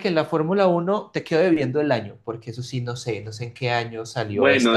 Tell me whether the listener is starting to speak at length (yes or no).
yes